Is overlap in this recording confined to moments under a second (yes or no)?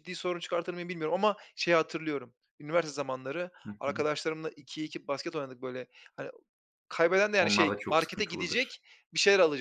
no